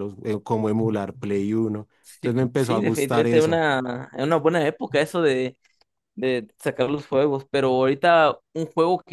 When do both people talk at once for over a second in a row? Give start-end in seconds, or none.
2.0-3.6